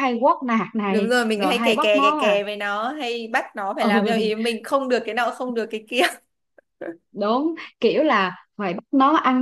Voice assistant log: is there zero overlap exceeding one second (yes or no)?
no